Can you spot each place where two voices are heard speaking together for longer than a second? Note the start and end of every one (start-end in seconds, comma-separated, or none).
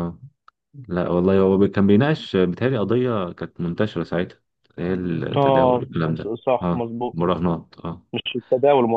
5.4-7.2